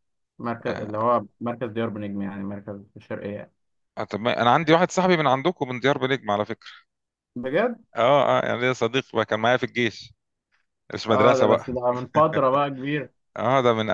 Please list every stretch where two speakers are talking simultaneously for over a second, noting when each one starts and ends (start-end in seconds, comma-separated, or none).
none